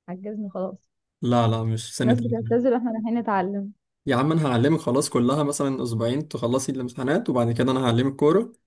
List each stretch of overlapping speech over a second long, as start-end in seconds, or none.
none